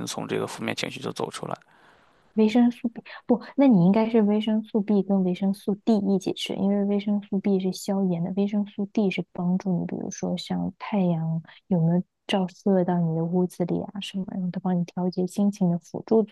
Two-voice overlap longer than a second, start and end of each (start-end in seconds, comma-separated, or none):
none